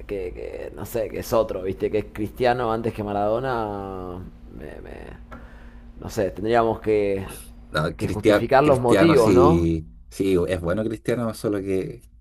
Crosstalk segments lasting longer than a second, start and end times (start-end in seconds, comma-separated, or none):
8.0-9.7